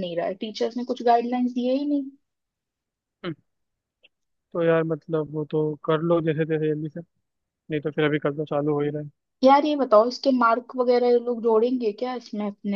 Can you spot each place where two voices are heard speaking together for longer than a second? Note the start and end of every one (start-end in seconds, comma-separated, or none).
none